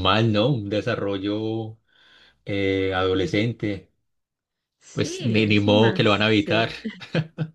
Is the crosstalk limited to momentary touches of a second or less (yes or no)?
no